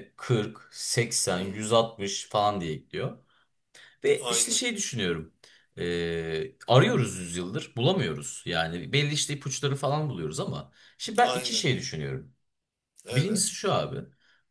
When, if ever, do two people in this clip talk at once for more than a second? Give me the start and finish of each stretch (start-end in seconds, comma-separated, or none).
none